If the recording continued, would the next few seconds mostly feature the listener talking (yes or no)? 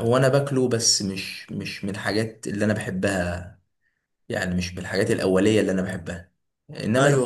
no